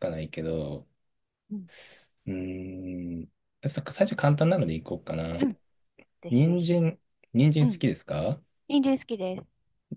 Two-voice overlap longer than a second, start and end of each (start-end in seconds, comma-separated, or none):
none